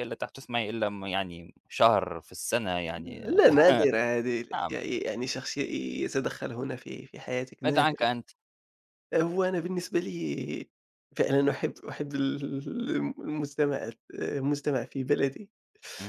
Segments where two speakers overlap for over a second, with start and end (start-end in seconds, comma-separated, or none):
none